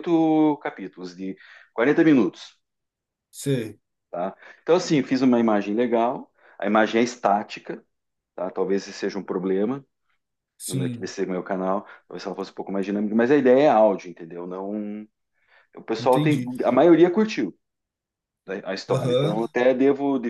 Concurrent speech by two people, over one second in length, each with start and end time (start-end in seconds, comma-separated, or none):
none